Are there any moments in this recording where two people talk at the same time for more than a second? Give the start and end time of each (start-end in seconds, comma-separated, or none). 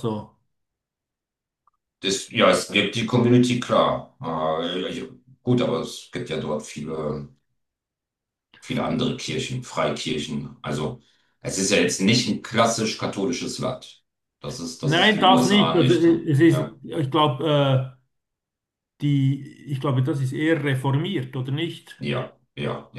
14.8-16.7